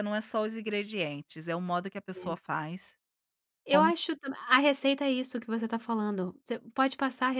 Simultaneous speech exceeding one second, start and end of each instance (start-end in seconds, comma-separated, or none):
none